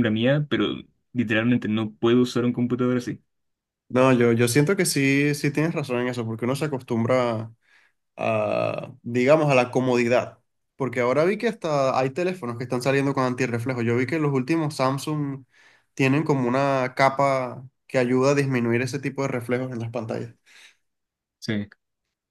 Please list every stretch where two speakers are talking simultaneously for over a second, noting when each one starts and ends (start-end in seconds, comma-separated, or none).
none